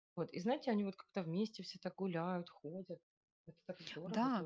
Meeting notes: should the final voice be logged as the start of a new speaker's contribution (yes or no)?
yes